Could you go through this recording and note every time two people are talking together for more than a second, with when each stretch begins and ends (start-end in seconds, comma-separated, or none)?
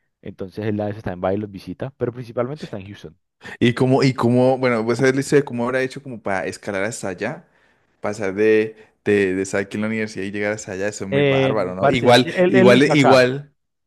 11.1-13.3